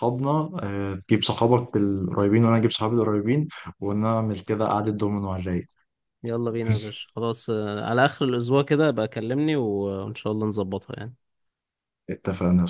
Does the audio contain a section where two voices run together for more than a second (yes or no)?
no